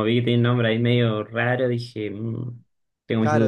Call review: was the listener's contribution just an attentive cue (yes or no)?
no